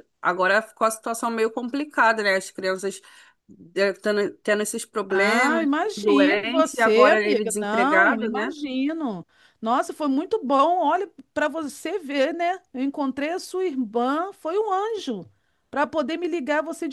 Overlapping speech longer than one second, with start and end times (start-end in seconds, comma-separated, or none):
5.1-8.5